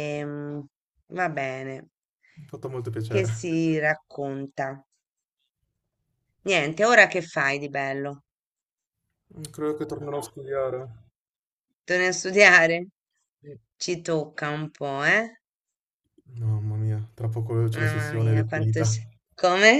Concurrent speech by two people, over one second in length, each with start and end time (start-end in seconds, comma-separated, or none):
17.7-19.0